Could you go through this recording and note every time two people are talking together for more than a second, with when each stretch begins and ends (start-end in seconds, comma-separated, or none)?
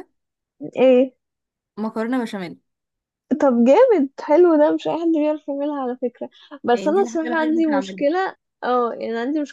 6.7-8.0